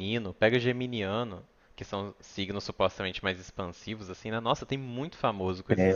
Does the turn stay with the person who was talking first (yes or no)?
no